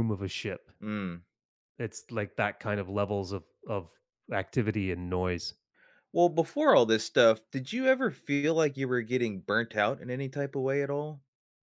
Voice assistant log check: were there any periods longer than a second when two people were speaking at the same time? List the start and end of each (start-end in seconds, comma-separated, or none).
none